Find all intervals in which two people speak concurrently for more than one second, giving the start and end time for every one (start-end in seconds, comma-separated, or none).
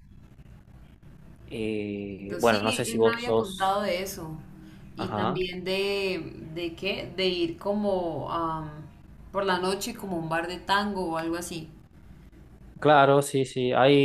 2.4-3.8